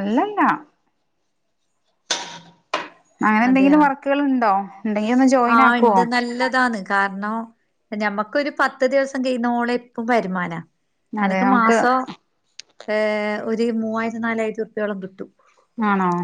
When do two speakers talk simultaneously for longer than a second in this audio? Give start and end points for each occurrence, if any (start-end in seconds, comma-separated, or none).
none